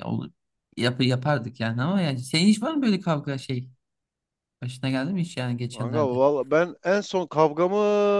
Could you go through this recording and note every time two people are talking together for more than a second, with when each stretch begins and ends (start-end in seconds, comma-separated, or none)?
none